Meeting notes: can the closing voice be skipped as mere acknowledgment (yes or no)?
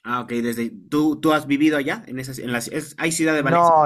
no